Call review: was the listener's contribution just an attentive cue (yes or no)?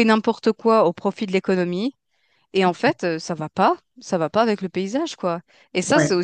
yes